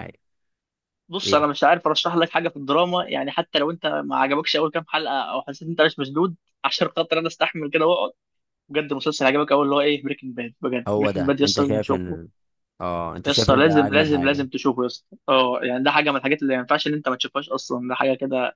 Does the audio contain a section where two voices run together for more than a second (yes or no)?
yes